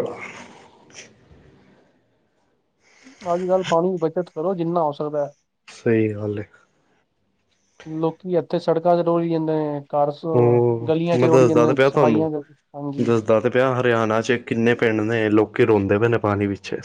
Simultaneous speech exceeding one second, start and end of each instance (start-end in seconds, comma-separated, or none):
10.9-12.3